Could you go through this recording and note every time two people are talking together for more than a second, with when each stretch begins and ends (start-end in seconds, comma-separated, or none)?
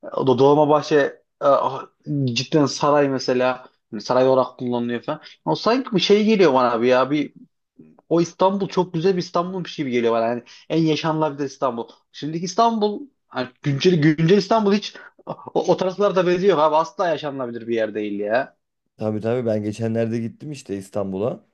none